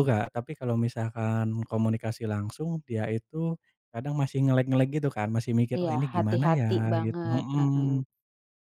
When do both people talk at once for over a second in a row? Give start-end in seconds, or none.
5.8-8.1